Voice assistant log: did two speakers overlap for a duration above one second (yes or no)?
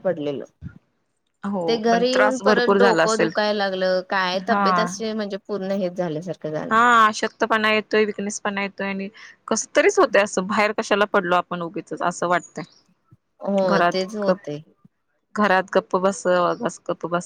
yes